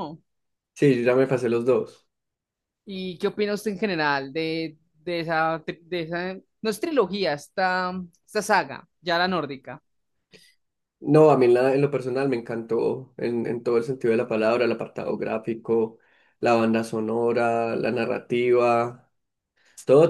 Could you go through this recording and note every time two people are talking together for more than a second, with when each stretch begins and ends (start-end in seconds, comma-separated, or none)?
none